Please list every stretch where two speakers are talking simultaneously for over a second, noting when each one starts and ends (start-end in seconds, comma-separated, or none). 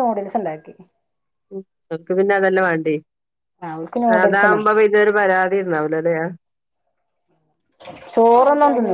none